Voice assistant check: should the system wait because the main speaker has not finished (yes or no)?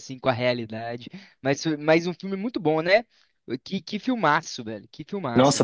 no